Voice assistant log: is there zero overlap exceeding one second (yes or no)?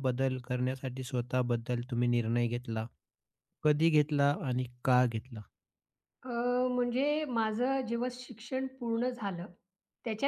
yes